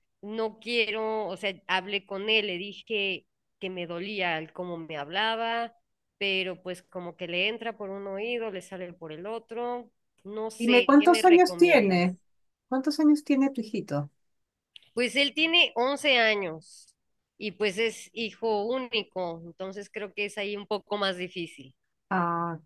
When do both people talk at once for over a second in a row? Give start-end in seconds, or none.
10.6-12.2